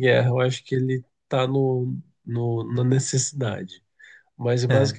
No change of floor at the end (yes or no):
yes